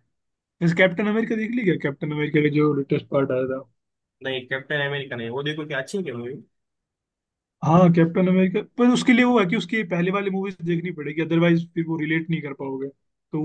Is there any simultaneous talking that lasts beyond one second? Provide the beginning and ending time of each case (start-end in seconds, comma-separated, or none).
none